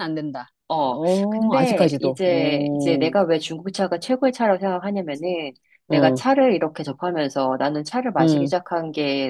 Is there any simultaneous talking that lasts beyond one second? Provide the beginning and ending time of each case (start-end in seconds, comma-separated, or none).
0.7-3.2